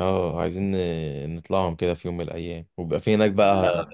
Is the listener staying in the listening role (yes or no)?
yes